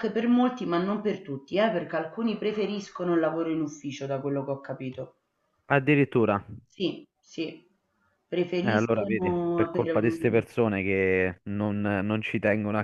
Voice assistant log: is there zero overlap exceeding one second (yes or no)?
no